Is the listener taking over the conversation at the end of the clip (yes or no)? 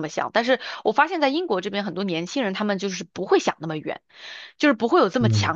no